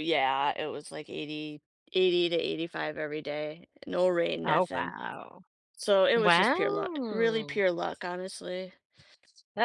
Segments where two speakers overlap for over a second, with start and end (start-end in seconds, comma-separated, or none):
6.2-7.6